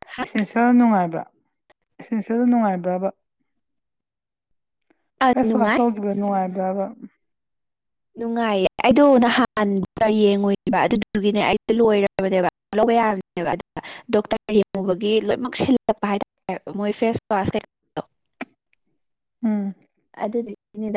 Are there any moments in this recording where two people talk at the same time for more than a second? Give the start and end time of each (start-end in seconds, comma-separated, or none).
none